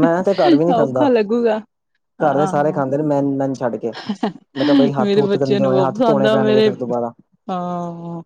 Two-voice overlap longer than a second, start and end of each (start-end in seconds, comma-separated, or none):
5.0-6.7